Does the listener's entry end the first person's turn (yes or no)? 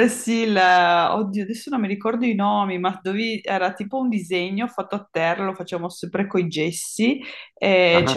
no